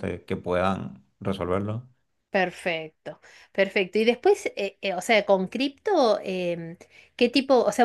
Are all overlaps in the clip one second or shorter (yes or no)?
yes